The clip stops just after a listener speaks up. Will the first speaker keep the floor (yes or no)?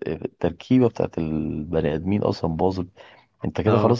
yes